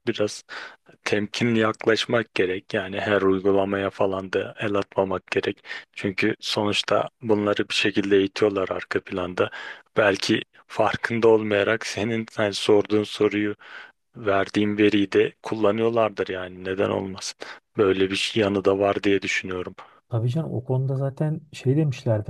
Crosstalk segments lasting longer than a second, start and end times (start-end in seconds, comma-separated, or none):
none